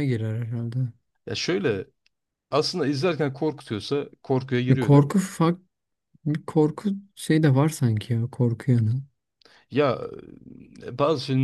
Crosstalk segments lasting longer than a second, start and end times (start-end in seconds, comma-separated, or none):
none